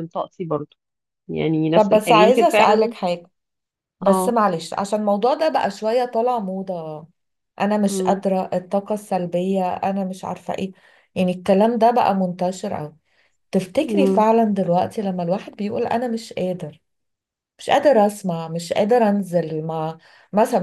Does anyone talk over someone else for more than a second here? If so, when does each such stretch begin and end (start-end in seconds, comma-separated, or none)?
1.7-2.9